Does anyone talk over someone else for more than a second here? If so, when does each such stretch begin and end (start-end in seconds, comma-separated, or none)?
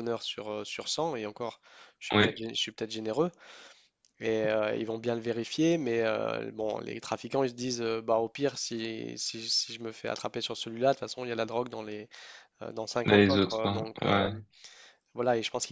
13.1-14.3